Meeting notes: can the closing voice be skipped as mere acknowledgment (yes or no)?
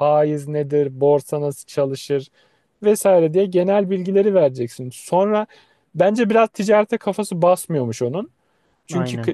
yes